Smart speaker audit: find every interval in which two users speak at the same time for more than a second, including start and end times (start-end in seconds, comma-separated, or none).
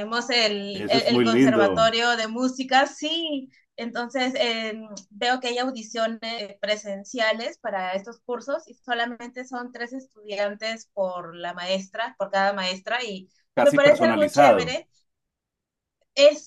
0.7-1.9, 13.5-14.8